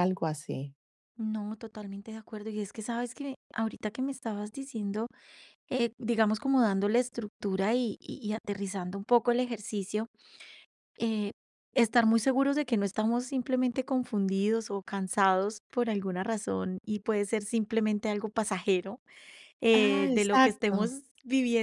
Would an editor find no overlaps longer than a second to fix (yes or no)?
no